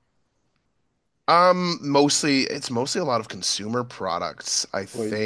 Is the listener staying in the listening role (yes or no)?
yes